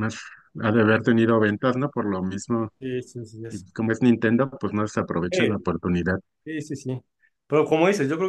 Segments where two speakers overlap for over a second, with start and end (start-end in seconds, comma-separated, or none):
none